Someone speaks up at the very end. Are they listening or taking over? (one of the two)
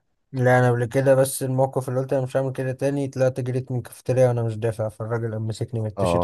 taking over